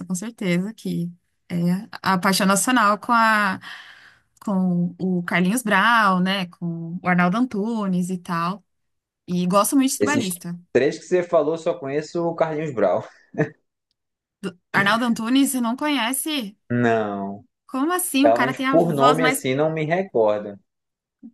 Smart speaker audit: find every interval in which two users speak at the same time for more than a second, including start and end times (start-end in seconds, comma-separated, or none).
18.2-19.4